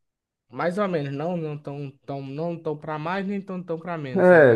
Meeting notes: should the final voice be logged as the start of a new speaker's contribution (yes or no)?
yes